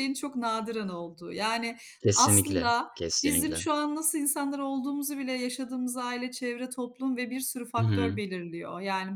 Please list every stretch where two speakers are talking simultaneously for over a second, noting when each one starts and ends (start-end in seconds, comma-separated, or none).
2.1-3.7